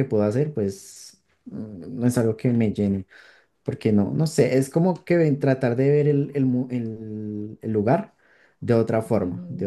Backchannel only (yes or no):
no